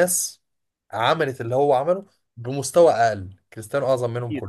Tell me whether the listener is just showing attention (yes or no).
no